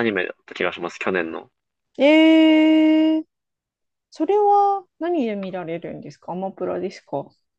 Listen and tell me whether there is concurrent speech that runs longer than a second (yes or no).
no